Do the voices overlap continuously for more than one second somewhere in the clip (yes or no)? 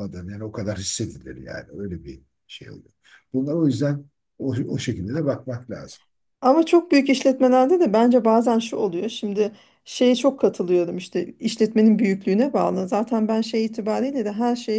no